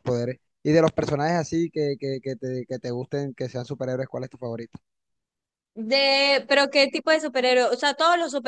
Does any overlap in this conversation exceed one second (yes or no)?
no